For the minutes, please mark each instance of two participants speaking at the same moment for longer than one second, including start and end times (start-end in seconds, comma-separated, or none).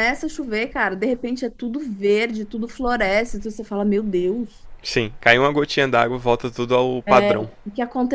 none